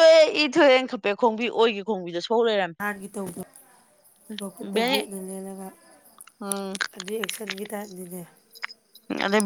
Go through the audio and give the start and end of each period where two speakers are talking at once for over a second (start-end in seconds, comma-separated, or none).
none